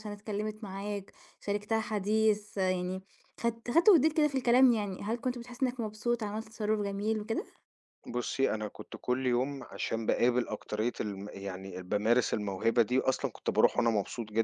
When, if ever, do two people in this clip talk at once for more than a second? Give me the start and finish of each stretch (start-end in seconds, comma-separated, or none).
none